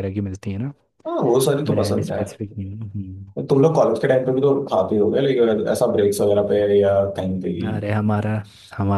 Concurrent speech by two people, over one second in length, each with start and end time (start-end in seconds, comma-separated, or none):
none